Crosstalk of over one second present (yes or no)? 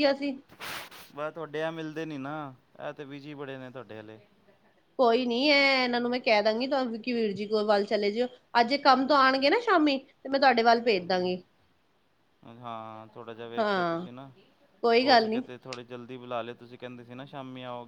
no